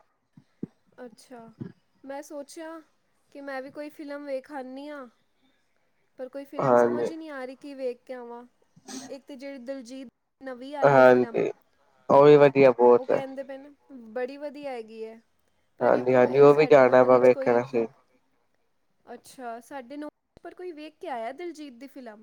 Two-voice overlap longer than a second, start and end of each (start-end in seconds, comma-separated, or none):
15.8-17.6